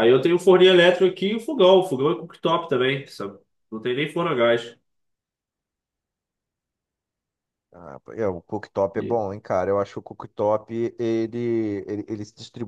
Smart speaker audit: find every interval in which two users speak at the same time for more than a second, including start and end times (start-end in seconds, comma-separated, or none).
none